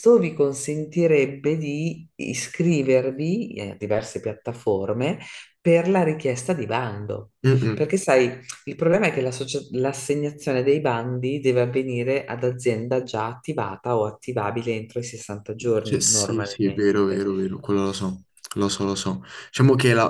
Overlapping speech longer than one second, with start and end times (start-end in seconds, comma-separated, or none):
15.8-17.2